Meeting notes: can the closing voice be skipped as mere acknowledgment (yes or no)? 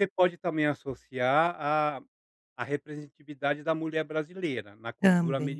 yes